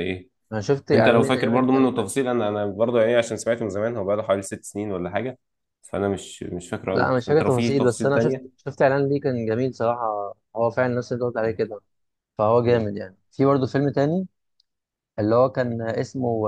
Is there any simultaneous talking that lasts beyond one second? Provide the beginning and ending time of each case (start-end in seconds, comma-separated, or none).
0.9-2.1, 6.9-8.4